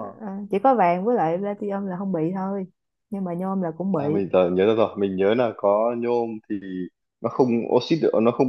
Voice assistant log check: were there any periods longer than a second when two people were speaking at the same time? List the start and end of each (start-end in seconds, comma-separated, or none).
none